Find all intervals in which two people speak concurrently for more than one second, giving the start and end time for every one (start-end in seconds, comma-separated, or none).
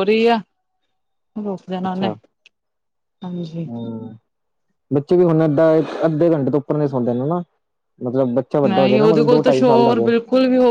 8.7-10.1